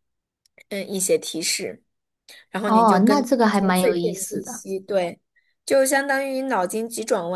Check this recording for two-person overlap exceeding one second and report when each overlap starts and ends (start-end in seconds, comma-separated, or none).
2.6-4.6